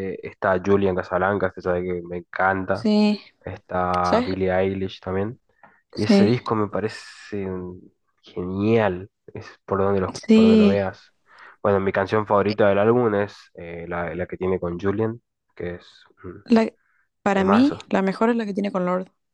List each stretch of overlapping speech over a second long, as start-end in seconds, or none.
none